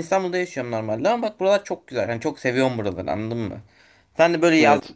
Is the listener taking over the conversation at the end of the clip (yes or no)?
no